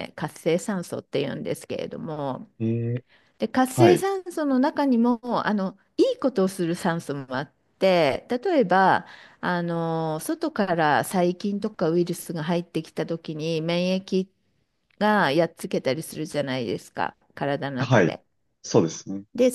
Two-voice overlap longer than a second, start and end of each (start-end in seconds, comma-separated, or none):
none